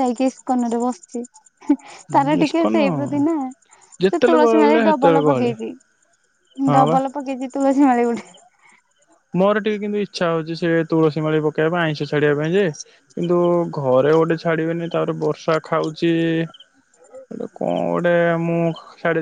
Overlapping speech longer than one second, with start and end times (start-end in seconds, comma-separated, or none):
4.1-5.5